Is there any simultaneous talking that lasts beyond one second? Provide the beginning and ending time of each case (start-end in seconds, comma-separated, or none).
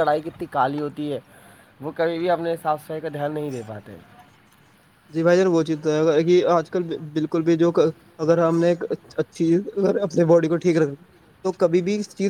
none